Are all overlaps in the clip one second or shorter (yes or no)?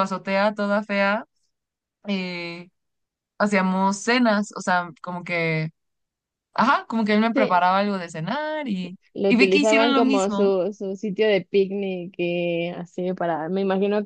no